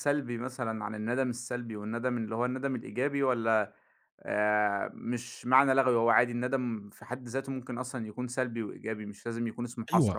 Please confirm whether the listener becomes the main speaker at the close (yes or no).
yes